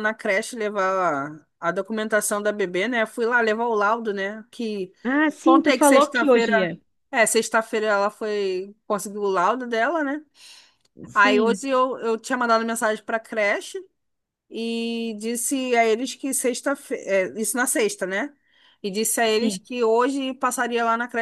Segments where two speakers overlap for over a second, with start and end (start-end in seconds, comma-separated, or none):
5.4-6.7